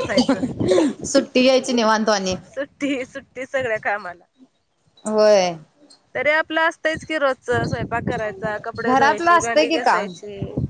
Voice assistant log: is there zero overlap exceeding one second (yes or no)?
no